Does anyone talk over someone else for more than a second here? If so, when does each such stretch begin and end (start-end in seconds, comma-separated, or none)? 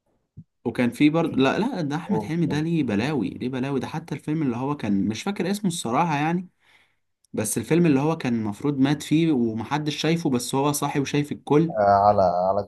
none